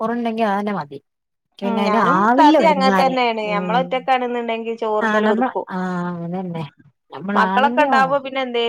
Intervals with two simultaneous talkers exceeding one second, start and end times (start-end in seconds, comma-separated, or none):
1.7-3.9